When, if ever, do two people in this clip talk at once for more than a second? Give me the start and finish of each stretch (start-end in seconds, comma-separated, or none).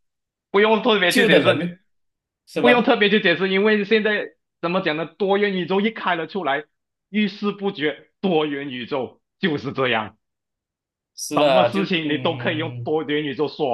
11.3-12.9